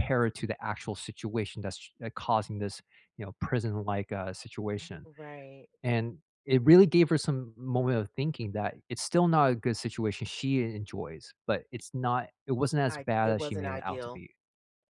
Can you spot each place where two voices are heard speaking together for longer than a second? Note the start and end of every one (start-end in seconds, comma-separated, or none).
12.9-14.2